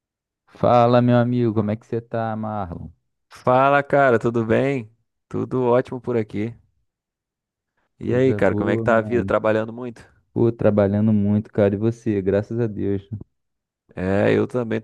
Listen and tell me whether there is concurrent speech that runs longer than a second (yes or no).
yes